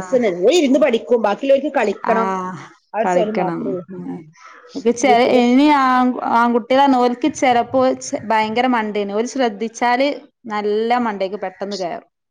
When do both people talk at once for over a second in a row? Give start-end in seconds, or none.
none